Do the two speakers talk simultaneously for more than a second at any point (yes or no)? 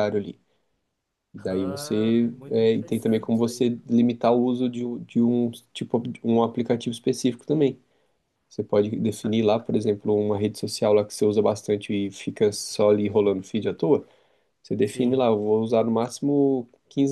yes